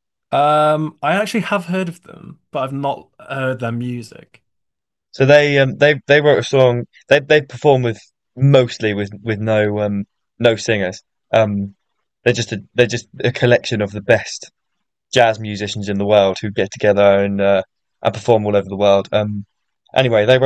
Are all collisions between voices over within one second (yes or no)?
yes